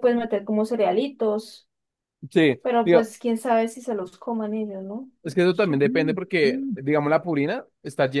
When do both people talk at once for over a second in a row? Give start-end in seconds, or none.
5.2-6.8